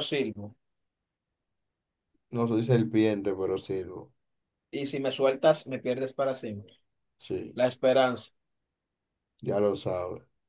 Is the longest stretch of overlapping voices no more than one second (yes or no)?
yes